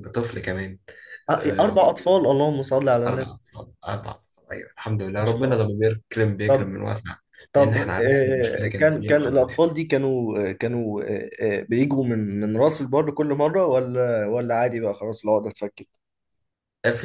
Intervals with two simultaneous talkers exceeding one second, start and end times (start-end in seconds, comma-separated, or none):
7.5-9.6